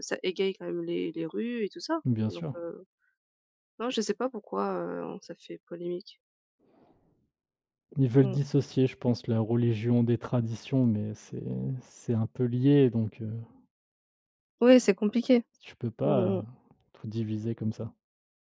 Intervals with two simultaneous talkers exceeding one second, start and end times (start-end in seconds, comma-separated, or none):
none